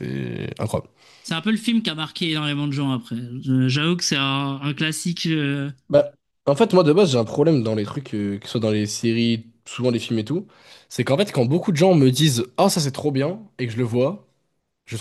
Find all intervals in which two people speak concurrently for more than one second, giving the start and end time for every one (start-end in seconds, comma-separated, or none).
none